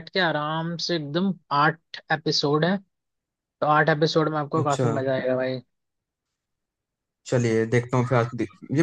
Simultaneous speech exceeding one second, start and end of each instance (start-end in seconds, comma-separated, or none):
none